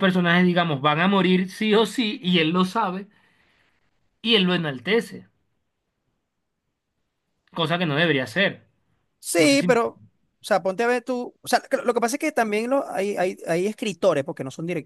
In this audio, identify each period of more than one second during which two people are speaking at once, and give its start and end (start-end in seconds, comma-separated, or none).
none